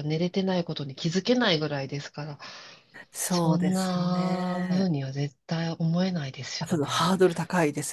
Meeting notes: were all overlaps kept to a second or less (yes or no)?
no